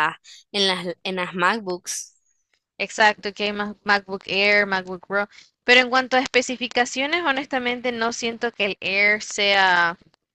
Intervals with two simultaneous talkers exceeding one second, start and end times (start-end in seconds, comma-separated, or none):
none